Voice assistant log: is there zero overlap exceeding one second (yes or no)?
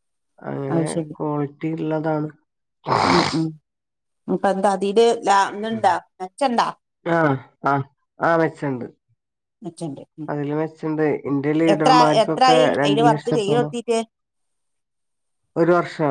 no